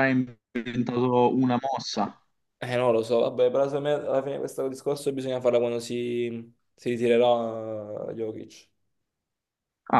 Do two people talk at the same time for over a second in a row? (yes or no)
no